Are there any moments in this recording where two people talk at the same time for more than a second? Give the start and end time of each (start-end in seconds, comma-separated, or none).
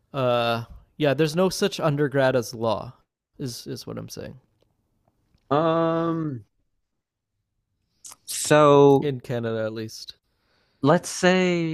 none